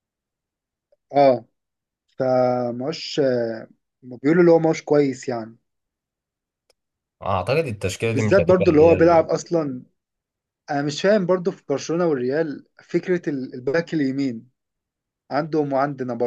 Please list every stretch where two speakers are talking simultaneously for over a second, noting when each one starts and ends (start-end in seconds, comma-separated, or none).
8.0-9.3